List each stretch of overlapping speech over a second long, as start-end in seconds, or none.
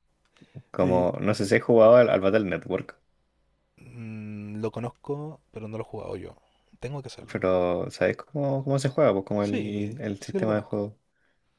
9.4-10.8